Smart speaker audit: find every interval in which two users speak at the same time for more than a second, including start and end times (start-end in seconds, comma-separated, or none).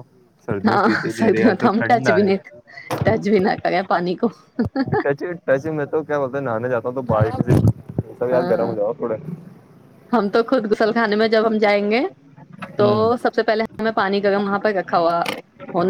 0.7-2.3